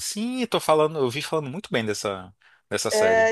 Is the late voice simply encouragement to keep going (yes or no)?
no